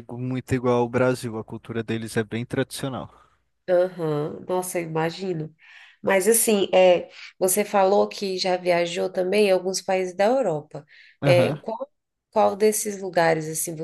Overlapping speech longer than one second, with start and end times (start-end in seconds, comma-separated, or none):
none